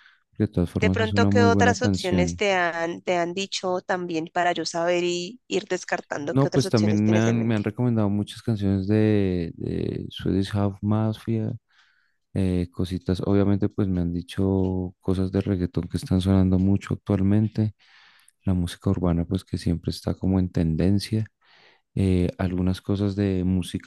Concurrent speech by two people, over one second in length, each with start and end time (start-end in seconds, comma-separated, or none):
0.8-2.4, 6.3-7.6